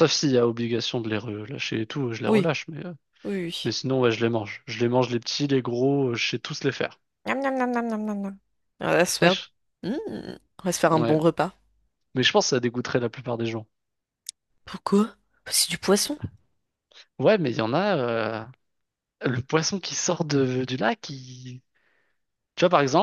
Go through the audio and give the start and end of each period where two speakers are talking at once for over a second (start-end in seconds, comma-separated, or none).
none